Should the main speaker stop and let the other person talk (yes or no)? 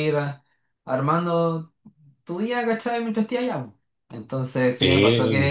no